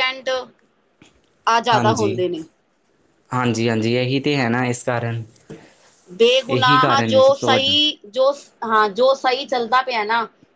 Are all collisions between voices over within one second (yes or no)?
no